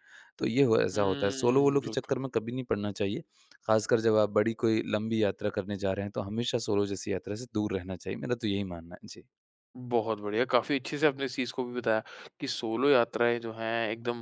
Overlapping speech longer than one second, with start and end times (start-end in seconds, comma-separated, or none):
0.9-2.1